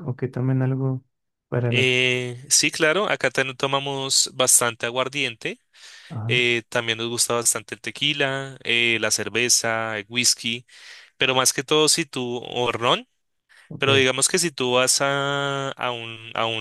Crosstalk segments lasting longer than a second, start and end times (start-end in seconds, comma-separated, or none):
none